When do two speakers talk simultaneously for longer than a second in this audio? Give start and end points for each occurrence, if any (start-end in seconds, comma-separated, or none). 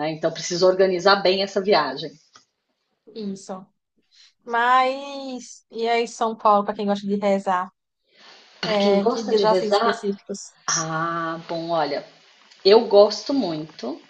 8.6-10.0